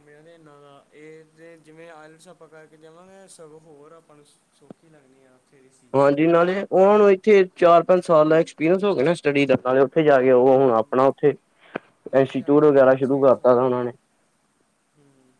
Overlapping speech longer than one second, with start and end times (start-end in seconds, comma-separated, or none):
12.2-13.8